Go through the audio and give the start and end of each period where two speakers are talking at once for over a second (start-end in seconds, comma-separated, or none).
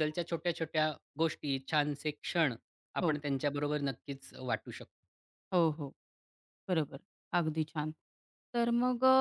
none